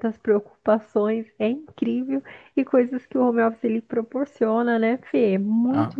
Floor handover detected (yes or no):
no